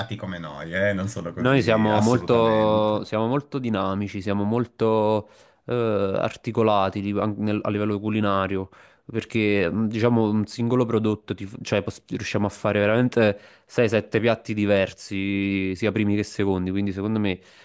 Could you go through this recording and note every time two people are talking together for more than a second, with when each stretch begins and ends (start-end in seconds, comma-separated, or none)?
1.4-3.2